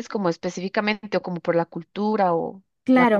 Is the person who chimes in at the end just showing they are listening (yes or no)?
no